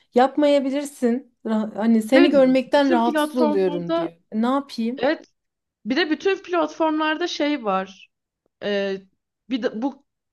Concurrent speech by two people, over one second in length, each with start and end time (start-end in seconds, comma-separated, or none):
2.1-4.1